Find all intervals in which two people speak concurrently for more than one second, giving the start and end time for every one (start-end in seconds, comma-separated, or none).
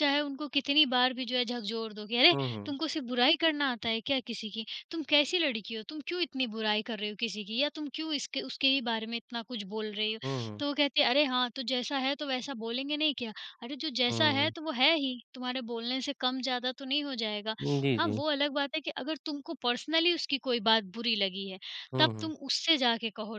none